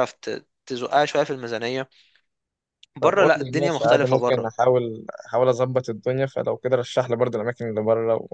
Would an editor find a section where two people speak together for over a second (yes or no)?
yes